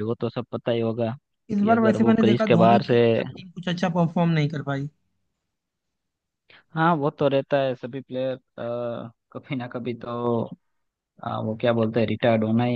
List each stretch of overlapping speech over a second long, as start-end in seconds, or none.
1.6-3.0